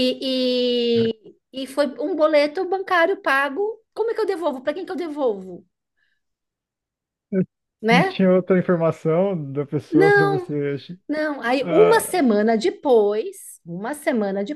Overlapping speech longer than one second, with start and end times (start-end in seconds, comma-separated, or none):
none